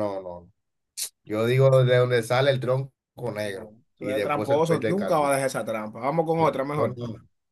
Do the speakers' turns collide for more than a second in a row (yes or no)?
yes